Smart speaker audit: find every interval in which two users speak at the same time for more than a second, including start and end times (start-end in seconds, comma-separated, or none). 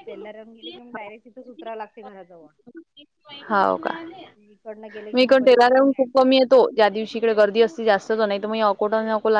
none